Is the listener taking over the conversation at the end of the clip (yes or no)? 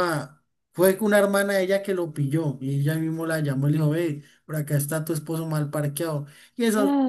no